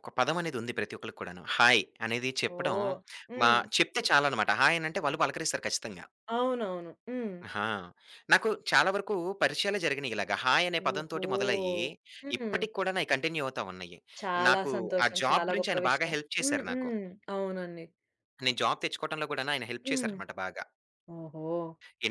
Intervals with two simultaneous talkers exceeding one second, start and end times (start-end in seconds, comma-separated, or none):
14.5-16.9